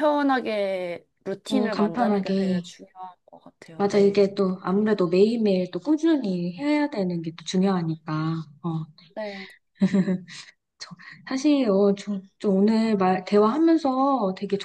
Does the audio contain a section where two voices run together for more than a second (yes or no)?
yes